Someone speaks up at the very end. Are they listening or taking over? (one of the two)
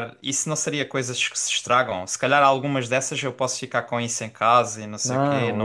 taking over